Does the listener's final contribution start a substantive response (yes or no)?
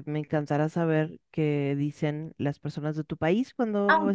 yes